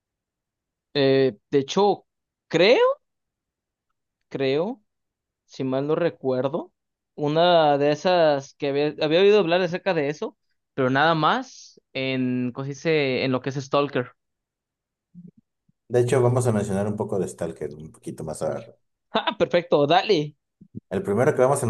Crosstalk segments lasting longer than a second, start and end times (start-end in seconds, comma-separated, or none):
none